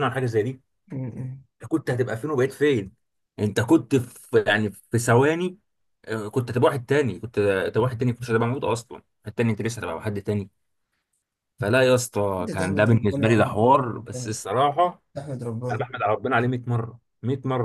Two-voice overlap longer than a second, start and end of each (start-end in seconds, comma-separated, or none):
12.4-14.3